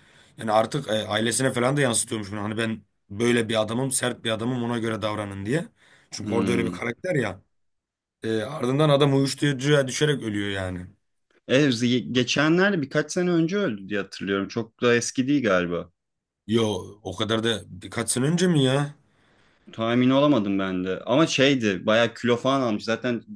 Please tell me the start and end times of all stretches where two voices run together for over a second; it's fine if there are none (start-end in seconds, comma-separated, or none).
none